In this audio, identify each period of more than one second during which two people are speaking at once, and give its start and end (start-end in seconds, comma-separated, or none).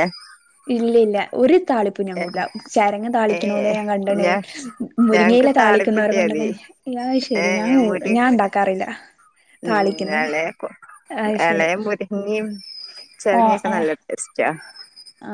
5.1-6.4